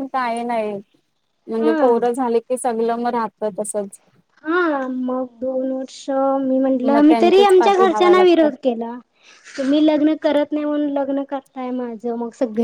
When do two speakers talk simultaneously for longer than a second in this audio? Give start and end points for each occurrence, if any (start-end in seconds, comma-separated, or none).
6.9-8.5